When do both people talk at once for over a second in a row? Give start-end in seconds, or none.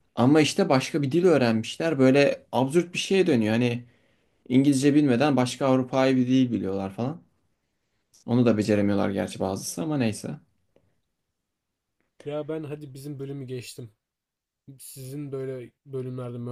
none